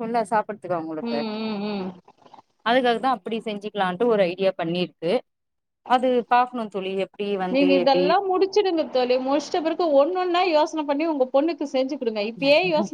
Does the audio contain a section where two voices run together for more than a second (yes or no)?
no